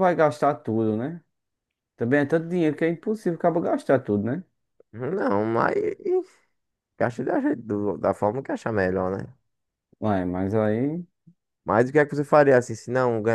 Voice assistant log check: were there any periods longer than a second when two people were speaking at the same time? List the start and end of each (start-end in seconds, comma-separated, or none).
none